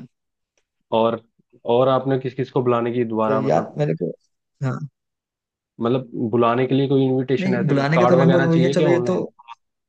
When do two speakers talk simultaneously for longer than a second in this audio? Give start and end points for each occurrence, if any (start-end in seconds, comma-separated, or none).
7.4-9.2